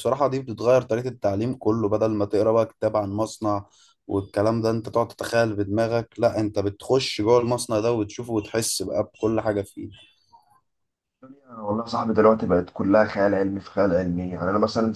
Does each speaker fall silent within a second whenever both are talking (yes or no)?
yes